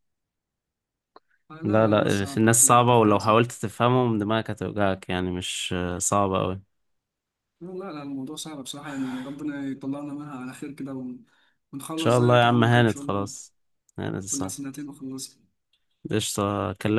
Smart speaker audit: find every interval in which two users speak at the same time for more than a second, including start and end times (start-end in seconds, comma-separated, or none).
1.6-3.4, 11.9-13.3